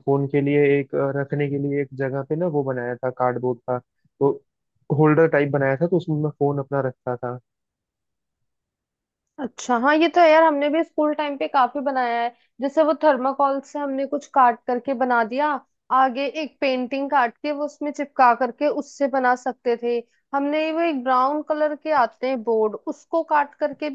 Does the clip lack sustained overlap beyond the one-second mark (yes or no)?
yes